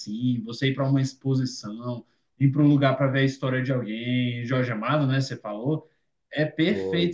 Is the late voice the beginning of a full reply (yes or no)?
no